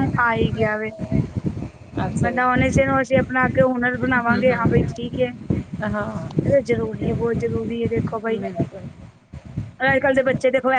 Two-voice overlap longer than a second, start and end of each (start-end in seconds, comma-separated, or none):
none